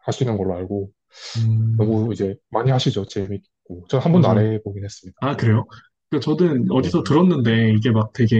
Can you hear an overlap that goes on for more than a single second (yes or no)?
no